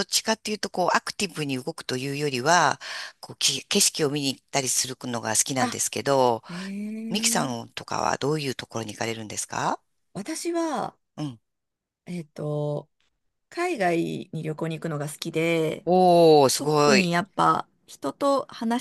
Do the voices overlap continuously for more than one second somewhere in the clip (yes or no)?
no